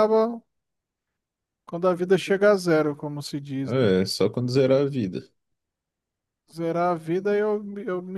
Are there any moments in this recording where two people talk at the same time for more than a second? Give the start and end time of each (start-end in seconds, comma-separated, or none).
none